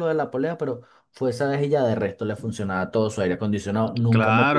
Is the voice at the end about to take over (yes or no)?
yes